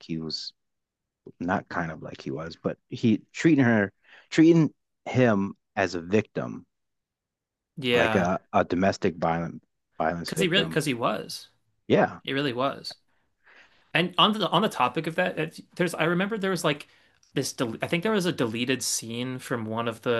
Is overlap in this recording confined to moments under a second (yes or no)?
yes